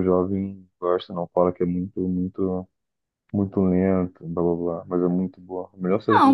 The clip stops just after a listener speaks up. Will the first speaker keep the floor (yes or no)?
no